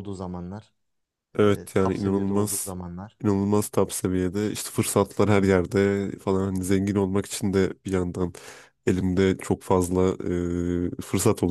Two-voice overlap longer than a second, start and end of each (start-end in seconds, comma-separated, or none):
1.4-2.7